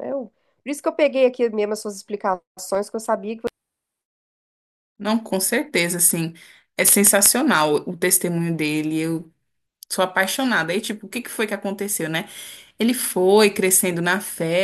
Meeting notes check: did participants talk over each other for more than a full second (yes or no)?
no